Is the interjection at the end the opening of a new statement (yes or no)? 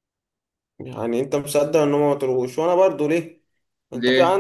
no